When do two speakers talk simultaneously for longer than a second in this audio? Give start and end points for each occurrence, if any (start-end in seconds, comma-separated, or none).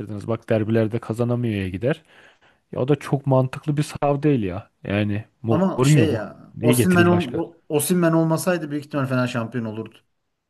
5.5-7.4